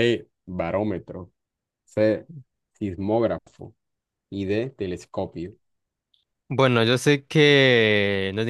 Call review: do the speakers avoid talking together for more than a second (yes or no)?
yes